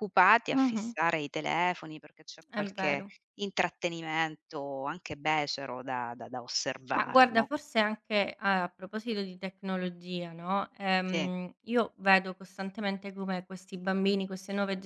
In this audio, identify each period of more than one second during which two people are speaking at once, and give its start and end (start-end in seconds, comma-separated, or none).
none